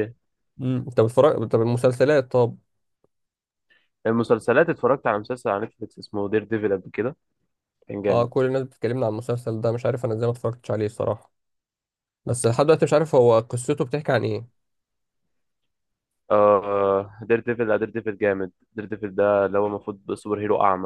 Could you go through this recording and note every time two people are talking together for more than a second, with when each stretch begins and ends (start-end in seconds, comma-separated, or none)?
none